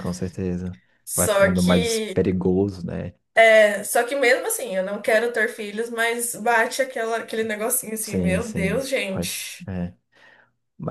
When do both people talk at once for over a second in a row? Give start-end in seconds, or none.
1.0-2.3, 8.0-9.6